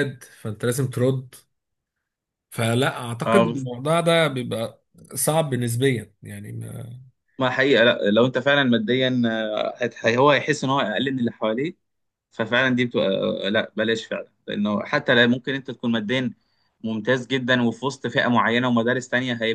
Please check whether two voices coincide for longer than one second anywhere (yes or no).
no